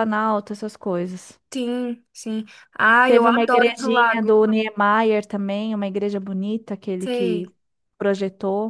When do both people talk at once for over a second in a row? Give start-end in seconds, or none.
3.0-4.3